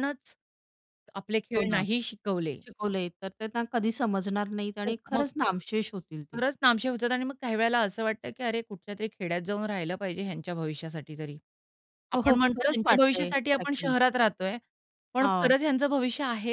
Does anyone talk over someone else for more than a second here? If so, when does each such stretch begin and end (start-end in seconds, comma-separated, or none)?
12.1-14.0